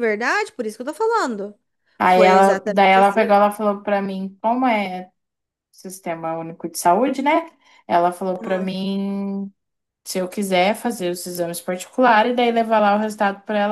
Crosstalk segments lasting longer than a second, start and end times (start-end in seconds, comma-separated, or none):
2.0-3.4